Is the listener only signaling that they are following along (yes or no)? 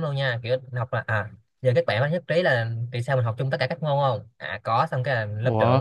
yes